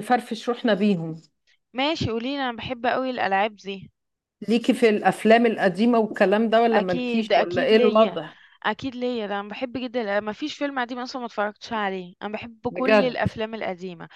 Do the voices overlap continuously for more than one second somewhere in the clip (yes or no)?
yes